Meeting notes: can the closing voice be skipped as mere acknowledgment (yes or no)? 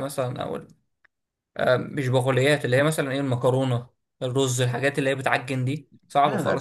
no